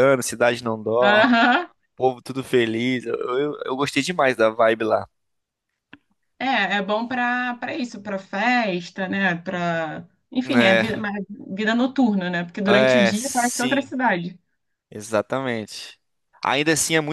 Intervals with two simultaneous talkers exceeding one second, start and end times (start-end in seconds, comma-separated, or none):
12.7-13.9